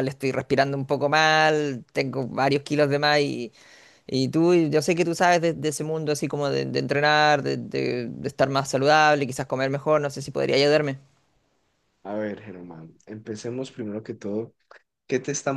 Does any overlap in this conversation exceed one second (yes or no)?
no